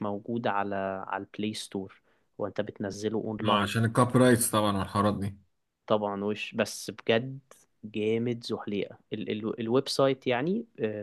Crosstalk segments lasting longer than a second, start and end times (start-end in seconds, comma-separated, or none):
none